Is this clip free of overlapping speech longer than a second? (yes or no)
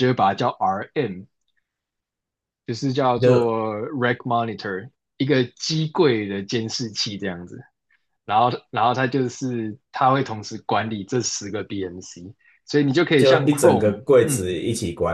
no